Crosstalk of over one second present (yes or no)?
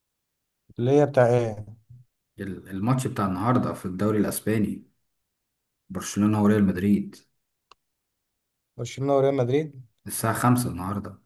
no